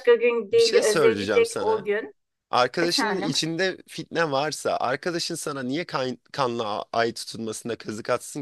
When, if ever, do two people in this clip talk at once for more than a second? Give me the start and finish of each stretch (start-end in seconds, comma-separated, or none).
0.5-1.9